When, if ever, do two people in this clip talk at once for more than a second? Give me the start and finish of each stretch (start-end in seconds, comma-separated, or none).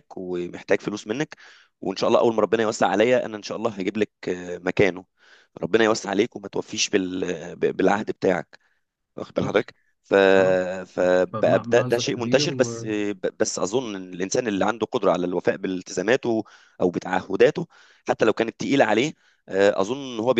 10.9-12.5